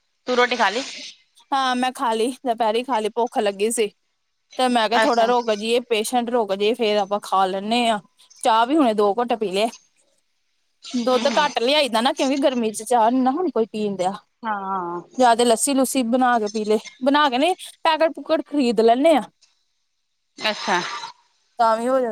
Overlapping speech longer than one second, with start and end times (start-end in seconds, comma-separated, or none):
none